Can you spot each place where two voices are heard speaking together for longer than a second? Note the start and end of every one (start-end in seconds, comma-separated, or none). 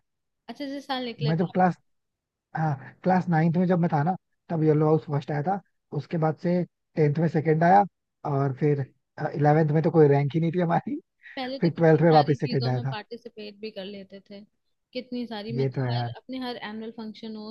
11.6-12.9